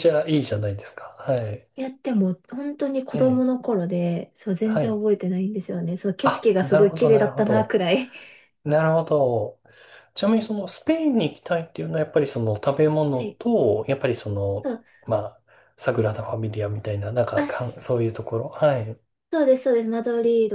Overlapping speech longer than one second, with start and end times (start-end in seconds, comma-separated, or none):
6.2-7.8